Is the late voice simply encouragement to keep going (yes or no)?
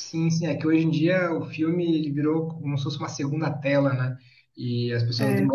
yes